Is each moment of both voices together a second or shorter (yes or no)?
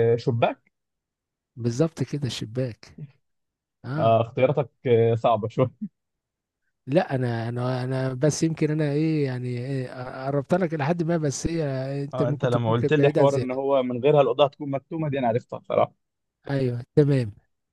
no